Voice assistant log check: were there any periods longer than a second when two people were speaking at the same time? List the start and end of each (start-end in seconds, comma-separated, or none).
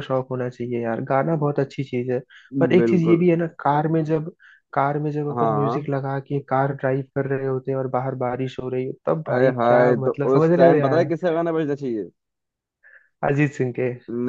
9.3-11.1